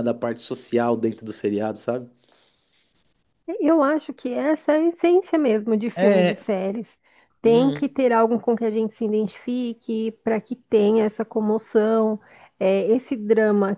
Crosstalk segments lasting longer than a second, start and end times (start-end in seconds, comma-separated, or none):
none